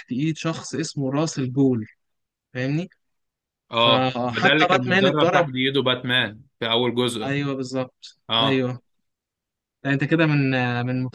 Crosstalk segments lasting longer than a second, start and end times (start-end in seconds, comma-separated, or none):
3.8-5.5